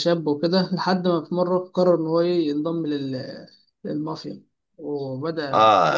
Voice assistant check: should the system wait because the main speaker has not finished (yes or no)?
no